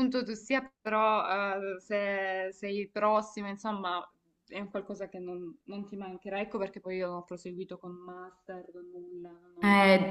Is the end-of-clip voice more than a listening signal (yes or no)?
yes